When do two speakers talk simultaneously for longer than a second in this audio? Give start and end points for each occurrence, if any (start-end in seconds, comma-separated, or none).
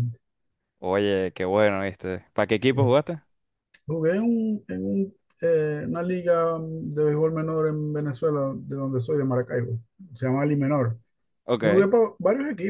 none